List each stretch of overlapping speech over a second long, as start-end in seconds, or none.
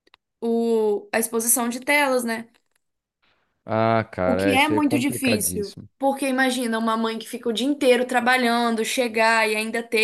4.2-5.9